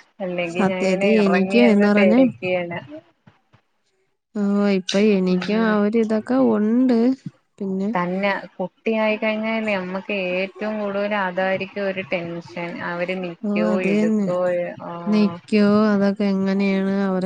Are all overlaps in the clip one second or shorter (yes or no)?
no